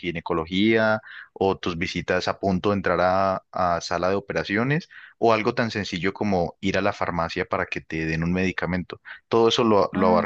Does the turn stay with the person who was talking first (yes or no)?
yes